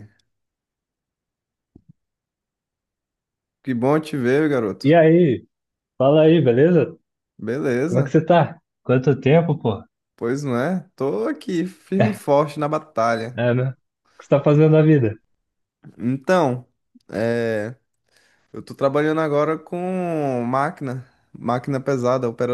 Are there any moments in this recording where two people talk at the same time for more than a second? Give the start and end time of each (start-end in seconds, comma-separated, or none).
none